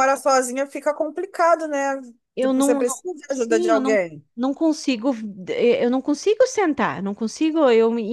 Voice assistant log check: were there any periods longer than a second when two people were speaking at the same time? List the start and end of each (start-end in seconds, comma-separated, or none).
2.4-4.0